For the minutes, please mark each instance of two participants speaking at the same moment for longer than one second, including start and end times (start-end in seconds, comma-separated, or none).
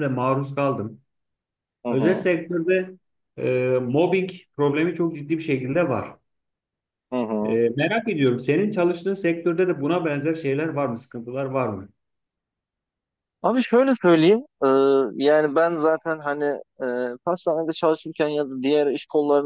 none